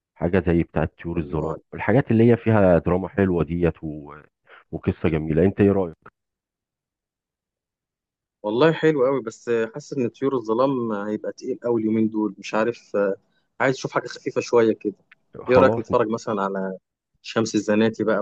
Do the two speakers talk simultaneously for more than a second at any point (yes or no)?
no